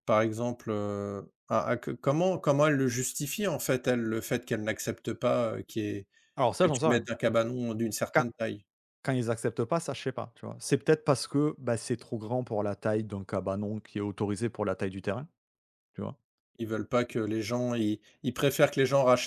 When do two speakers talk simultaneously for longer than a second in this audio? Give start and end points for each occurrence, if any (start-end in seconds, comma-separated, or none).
none